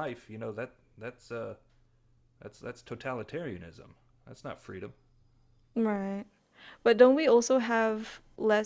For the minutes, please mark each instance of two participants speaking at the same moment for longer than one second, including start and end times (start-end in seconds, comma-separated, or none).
none